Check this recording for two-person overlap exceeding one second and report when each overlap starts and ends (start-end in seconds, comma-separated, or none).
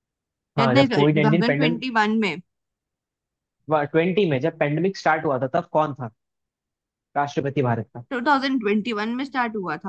0.6-1.8